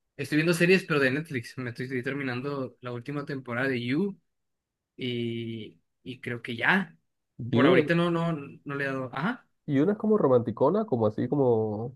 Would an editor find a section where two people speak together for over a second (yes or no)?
no